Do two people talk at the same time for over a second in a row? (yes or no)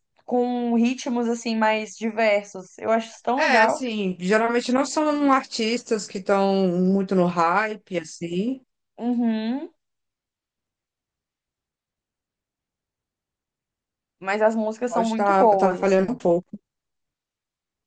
yes